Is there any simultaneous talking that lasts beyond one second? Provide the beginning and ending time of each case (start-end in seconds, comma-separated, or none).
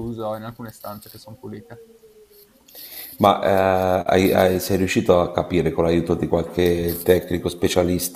none